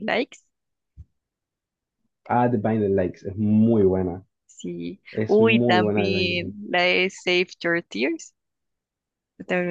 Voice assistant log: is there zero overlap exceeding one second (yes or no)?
no